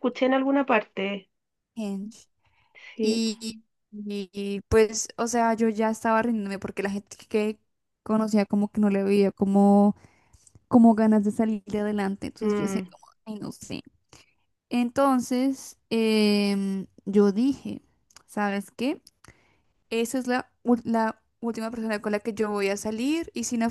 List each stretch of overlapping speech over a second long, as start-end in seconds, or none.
none